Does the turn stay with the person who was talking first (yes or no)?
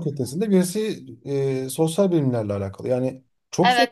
no